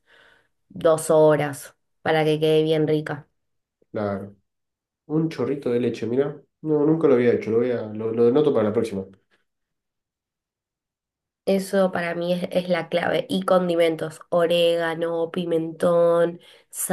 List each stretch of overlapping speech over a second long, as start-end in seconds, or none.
none